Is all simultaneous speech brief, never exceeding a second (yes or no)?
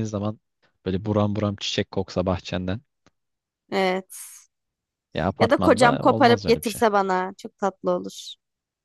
no